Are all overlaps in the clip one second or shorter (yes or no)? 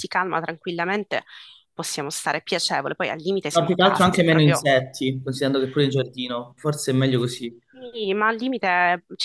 no